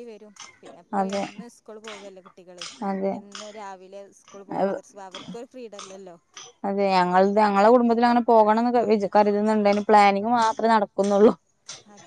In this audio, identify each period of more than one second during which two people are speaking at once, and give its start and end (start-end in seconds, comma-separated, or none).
none